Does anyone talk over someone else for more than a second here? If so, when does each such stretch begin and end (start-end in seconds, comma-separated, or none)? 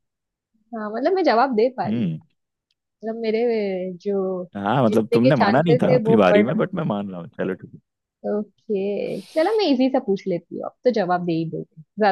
4.9-6.5